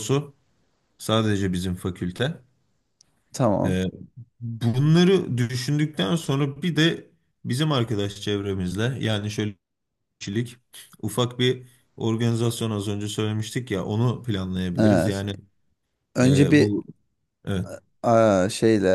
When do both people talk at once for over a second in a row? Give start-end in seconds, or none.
none